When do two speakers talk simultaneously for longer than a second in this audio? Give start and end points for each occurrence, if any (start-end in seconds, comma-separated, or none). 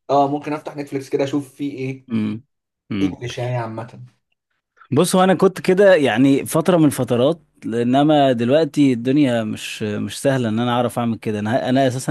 none